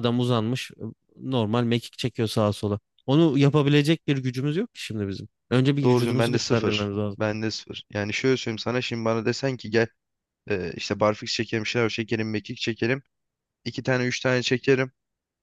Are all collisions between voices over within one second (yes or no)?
no